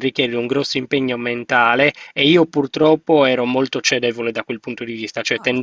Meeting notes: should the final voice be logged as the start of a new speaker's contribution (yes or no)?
no